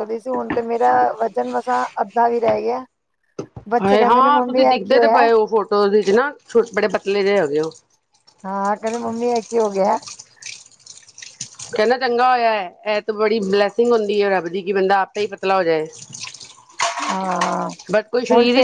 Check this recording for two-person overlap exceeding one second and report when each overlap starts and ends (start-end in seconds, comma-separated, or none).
3.8-5.2